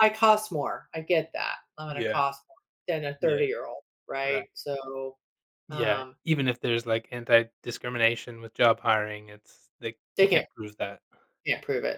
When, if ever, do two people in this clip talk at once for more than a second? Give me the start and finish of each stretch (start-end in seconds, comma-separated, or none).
none